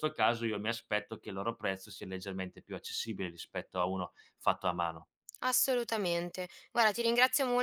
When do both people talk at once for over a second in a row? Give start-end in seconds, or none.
none